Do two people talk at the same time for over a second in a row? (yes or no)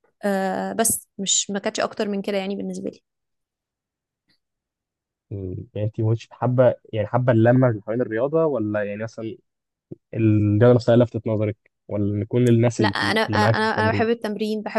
yes